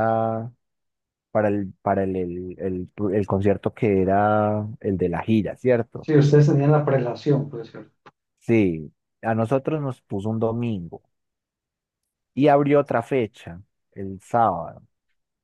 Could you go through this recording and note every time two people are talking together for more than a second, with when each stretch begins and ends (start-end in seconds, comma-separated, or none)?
none